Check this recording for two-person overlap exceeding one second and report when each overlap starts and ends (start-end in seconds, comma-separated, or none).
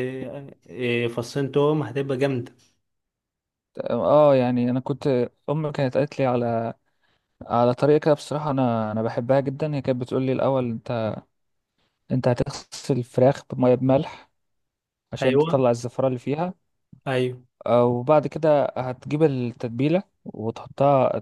none